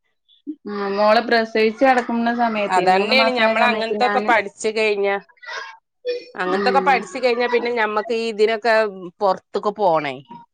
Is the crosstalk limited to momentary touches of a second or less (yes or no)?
yes